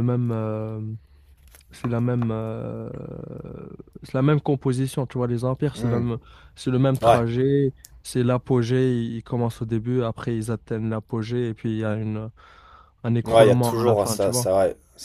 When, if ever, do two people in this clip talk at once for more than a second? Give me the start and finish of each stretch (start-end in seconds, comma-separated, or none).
13.2-14.5